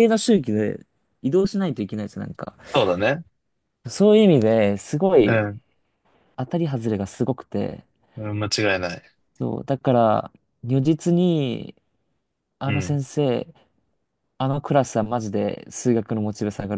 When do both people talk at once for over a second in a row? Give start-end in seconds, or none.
none